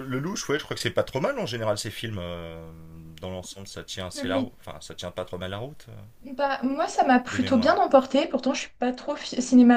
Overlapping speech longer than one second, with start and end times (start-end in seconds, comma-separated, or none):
none